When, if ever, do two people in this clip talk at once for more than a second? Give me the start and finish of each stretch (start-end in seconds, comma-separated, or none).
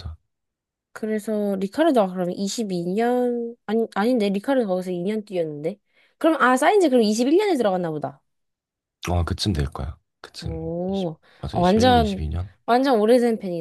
10.4-12.2